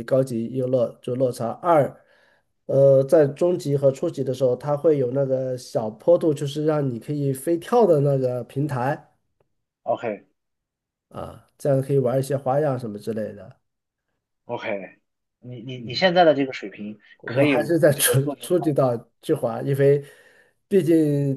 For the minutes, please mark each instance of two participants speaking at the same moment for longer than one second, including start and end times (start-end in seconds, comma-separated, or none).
17.2-18.8